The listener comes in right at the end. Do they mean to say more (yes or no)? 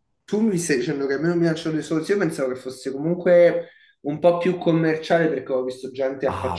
yes